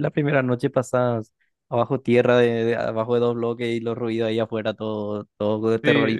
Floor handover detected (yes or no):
yes